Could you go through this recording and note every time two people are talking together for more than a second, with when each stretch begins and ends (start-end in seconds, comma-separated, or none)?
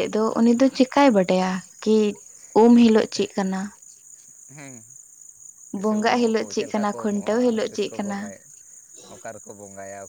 5.8-8.2